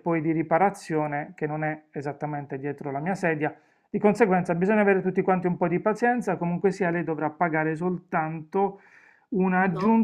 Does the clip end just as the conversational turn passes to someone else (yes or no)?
no